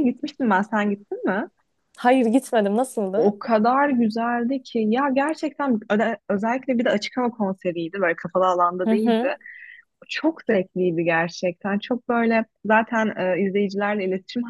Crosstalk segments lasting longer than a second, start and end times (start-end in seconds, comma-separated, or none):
none